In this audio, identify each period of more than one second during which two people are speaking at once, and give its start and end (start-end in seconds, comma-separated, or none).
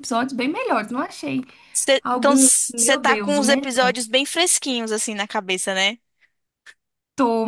2.0-3.9